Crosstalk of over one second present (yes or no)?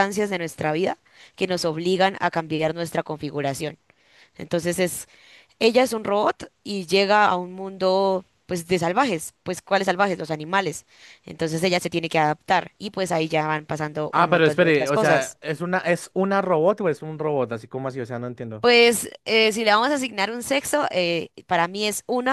yes